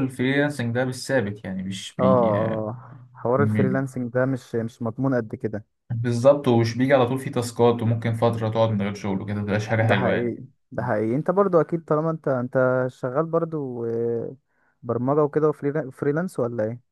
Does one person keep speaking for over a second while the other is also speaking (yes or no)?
no